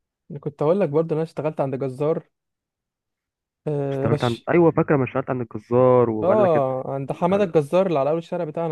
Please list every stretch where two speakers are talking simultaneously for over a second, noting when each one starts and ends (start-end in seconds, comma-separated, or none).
6.2-7.5